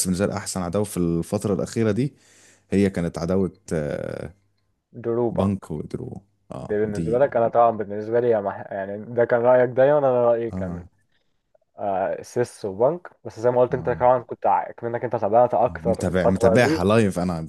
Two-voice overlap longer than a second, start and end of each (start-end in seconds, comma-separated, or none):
15.6-16.9